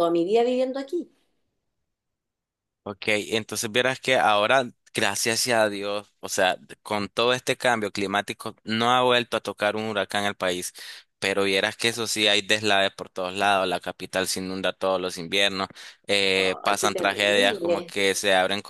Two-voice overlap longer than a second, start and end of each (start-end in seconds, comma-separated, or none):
16.4-17.9